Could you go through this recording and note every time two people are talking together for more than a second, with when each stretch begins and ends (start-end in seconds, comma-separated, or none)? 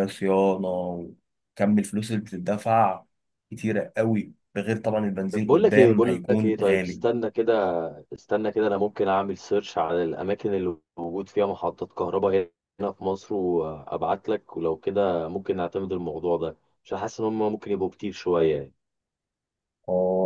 5.3-7.0